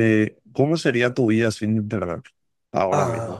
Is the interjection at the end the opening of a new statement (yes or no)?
yes